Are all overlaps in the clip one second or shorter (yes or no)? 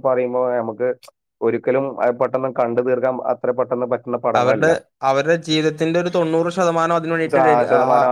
yes